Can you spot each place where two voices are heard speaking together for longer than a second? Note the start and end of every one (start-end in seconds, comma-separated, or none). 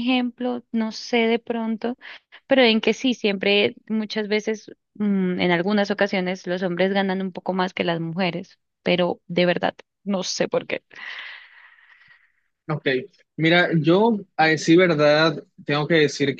none